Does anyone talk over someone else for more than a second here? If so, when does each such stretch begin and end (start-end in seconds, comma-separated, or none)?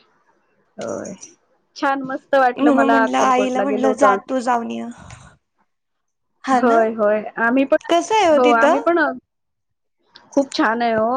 2.6-4.1